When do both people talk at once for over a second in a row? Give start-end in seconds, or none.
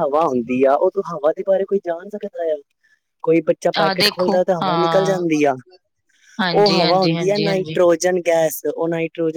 3.8-5.2, 6.6-7.8